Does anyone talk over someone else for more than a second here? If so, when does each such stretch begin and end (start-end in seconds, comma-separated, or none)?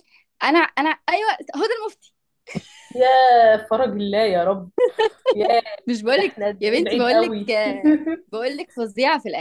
6.2-7.5